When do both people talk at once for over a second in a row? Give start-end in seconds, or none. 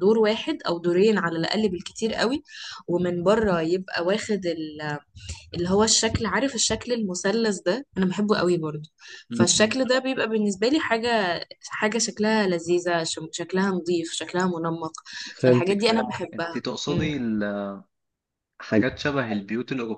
15.4-17.1